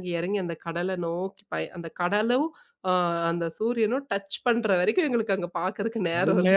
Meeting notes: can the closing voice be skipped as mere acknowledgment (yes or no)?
no